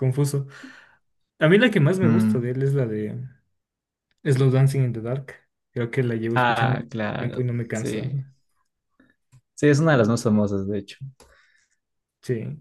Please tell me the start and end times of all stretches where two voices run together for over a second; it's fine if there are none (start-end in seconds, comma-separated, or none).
6.3-8.1